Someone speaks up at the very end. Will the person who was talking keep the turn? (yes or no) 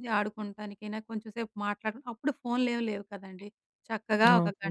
yes